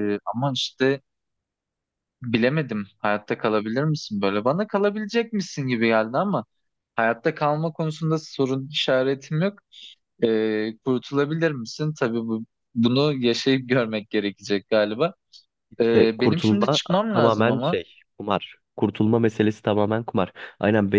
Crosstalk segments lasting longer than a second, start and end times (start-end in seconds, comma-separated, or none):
15.8-17.8